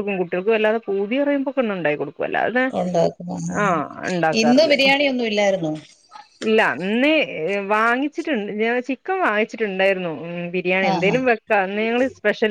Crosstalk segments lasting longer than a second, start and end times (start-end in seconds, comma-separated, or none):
none